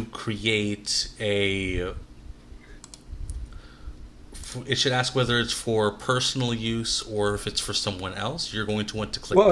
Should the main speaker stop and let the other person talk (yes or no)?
yes